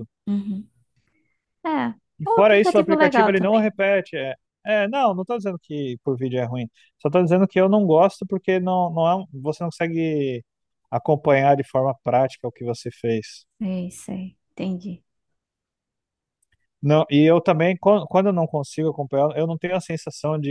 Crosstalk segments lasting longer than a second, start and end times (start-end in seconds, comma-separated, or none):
2.2-3.7